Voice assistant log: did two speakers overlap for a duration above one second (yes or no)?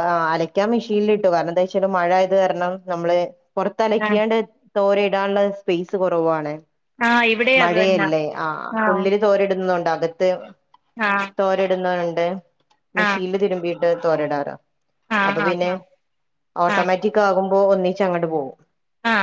no